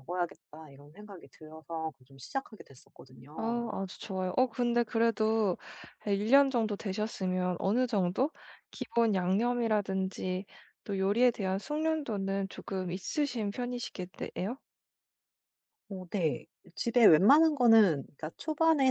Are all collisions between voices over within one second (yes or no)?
yes